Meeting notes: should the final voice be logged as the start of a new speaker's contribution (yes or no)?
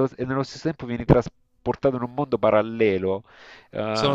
no